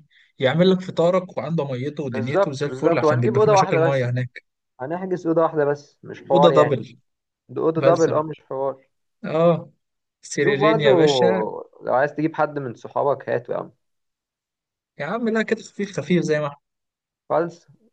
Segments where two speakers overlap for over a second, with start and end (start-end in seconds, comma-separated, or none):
2.1-4.0